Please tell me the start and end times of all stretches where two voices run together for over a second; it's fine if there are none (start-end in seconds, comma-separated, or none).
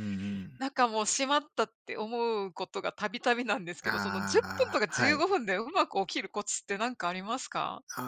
3.8-5.2